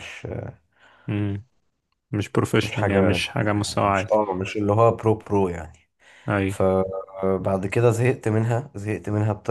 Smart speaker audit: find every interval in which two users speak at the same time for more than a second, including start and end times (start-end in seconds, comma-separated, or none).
2.6-4.1